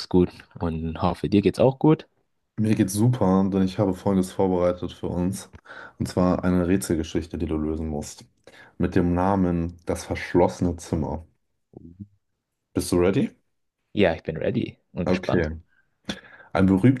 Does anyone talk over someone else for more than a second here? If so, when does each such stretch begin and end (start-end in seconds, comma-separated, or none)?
none